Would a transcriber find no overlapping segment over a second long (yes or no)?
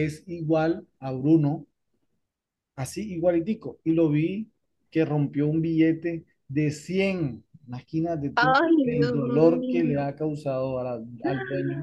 no